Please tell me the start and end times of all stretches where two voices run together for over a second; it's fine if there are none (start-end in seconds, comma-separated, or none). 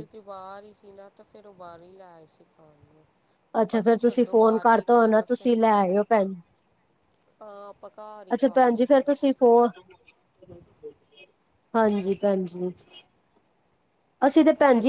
3.6-5.5